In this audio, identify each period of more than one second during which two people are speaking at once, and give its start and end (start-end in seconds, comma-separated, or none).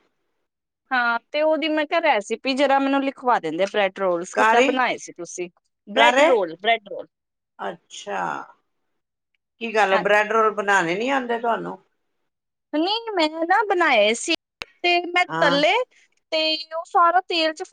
none